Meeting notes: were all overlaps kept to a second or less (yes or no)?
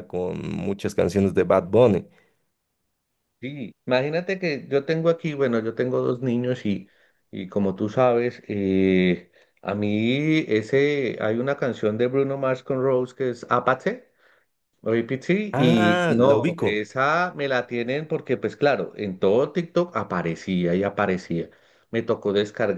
no